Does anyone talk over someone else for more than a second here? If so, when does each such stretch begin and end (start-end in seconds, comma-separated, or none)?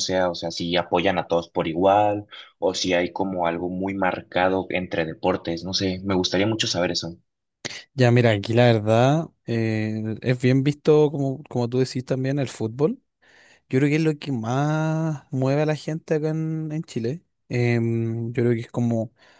none